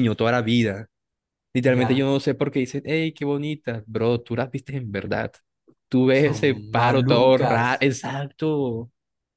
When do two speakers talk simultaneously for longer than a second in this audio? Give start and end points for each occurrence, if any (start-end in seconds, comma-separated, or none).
6.1-7.9